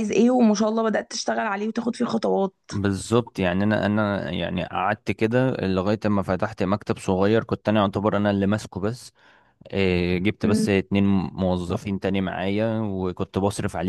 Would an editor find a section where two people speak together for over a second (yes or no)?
no